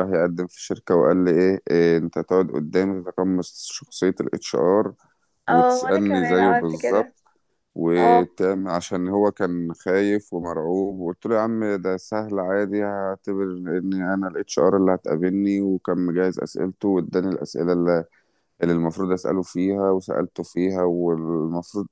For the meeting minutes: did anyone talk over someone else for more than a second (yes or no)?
yes